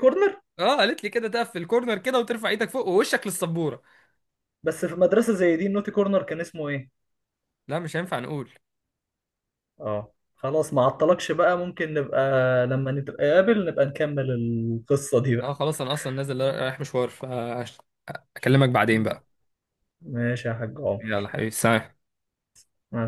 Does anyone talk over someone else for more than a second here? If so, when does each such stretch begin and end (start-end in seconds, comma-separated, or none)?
none